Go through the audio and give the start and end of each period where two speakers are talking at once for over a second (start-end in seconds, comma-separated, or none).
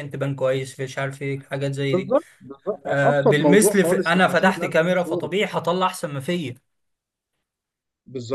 2.8-5.3